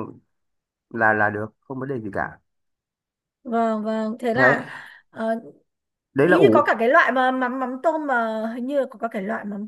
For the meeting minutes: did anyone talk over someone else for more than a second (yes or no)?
no